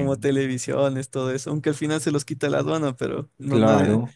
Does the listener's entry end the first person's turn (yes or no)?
no